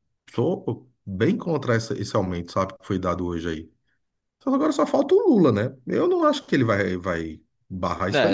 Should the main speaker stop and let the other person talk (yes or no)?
yes